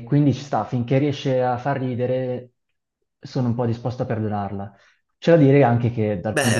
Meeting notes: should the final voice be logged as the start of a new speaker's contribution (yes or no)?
yes